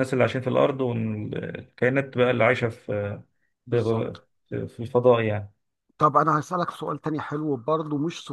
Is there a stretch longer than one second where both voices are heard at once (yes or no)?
no